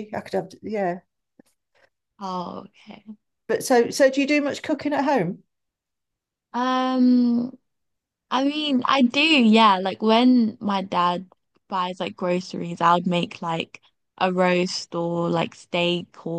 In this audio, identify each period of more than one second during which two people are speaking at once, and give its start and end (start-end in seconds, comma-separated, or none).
none